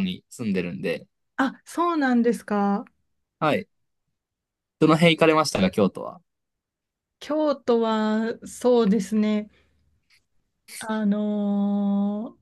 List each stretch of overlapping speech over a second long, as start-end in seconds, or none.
none